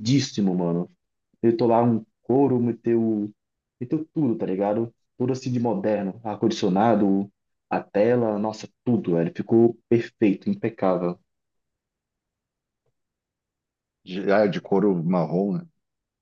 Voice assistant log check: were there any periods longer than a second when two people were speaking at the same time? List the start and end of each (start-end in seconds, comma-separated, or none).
none